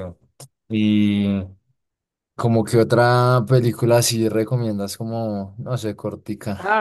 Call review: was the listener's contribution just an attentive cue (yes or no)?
no